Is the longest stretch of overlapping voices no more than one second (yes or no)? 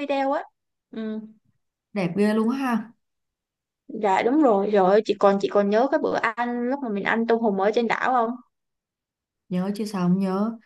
yes